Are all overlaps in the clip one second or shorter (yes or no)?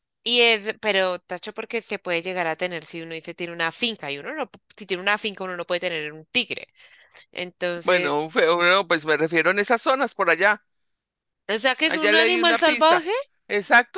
no